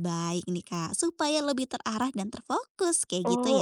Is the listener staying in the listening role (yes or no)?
no